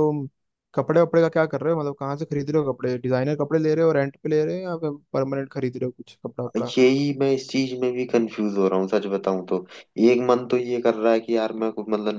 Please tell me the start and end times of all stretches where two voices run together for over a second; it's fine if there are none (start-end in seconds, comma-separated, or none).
none